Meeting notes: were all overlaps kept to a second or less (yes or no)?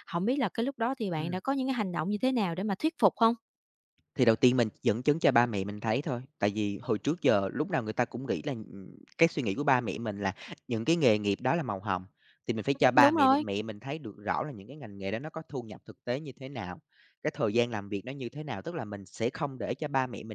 yes